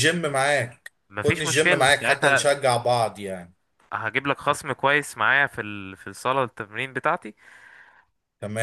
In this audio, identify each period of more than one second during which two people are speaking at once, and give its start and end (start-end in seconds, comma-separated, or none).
1.1-2.5